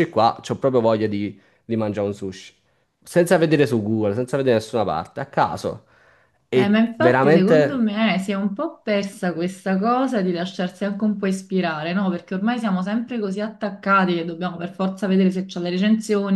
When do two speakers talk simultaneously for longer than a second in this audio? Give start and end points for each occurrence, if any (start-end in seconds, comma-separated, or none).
6.5-7.8